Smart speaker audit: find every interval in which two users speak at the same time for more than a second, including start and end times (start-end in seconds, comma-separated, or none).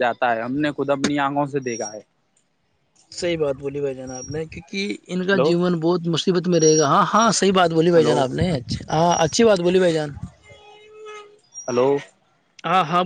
none